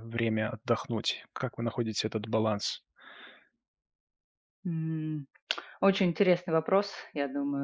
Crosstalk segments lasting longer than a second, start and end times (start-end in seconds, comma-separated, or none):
none